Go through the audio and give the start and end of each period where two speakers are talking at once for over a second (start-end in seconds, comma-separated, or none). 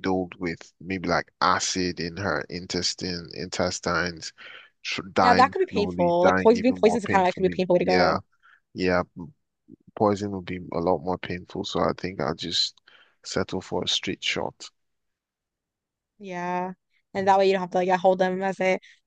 5.2-8.2